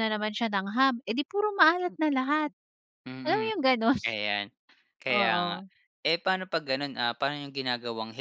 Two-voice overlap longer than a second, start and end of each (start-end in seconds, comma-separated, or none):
none